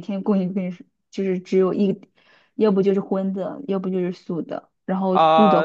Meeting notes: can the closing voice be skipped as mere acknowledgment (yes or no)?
no